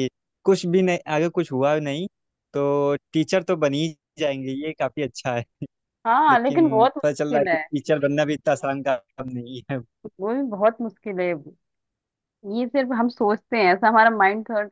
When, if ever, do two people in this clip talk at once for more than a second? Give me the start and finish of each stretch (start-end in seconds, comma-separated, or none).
6.3-7.6